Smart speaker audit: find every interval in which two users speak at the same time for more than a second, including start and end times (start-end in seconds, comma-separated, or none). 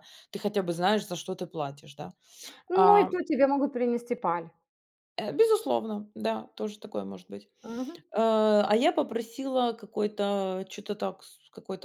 none